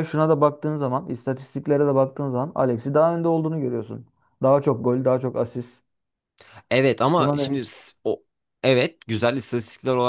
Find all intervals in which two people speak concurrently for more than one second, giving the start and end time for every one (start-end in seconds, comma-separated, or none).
none